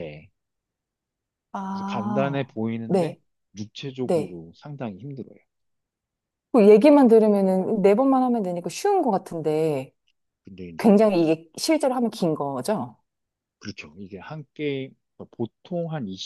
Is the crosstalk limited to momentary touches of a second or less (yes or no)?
no